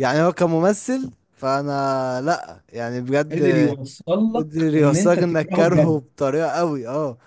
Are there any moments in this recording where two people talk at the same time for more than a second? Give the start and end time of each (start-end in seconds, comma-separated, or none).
4.3-6.0